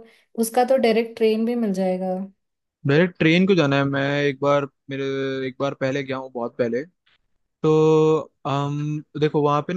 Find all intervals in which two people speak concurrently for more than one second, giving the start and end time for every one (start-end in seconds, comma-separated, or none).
none